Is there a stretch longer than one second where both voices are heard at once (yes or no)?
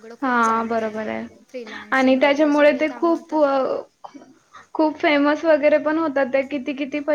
yes